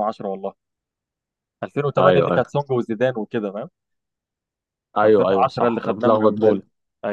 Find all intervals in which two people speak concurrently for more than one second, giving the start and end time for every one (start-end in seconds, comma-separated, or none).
5.0-6.6